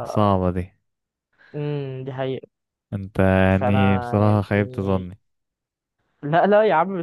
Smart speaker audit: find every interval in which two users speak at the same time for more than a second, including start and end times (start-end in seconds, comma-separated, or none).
3.5-5.1